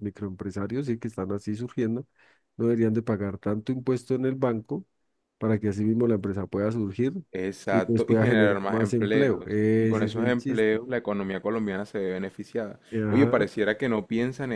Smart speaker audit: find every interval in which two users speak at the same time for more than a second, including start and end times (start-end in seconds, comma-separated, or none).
7.7-10.8